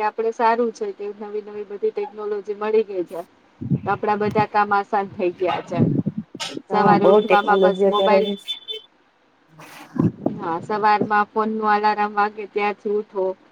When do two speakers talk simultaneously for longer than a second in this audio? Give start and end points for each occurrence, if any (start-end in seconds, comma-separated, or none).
6.7-8.3